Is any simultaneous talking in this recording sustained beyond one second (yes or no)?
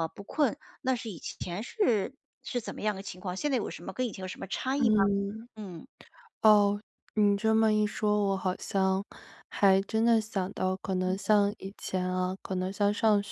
no